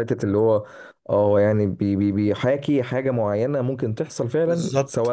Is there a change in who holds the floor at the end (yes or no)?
yes